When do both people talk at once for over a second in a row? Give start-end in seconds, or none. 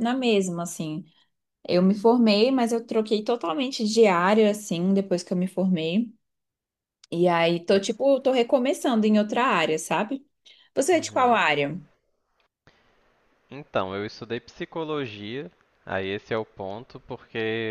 none